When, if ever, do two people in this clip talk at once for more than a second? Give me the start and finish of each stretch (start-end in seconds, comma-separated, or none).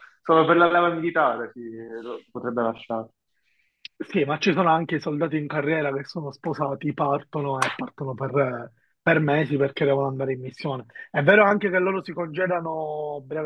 none